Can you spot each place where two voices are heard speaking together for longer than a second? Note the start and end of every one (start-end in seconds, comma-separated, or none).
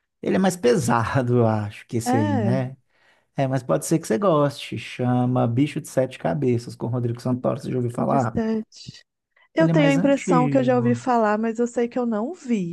9.6-11.1